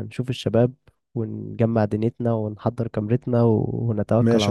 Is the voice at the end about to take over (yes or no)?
yes